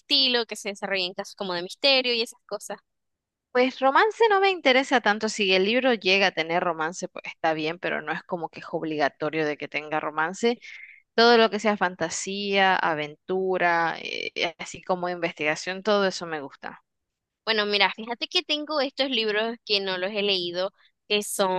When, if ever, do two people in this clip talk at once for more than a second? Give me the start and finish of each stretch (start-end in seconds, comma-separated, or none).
none